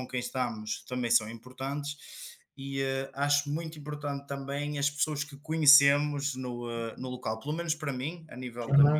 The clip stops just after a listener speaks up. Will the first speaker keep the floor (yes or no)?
yes